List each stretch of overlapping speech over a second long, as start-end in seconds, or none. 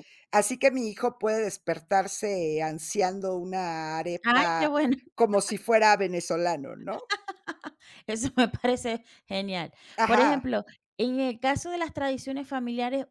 none